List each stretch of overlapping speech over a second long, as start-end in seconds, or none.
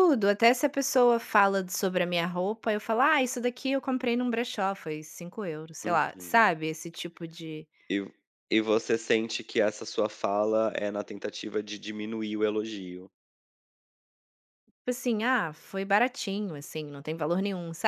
none